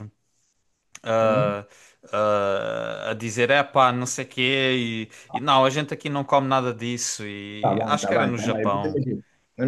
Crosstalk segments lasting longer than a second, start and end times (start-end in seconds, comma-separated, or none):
7.6-9.0